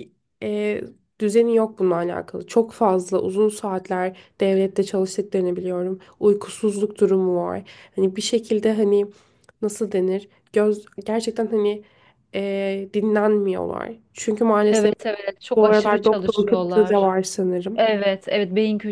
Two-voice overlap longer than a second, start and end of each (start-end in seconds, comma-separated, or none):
15.6-17.1